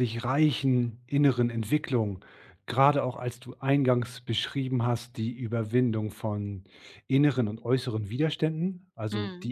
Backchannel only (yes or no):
yes